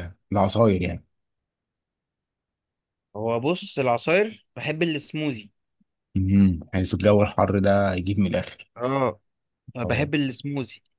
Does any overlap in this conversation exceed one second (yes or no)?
no